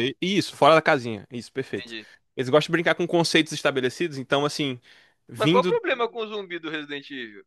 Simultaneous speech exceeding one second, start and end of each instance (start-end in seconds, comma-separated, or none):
none